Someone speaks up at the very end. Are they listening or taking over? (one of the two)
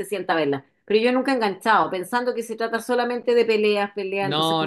taking over